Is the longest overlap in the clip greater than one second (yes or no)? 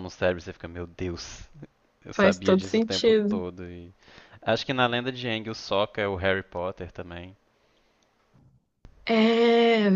yes